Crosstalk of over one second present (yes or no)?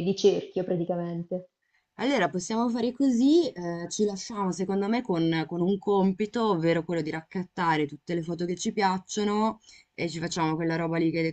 no